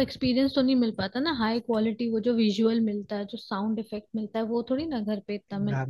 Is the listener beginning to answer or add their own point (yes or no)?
yes